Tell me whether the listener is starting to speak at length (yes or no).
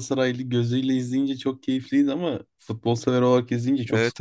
yes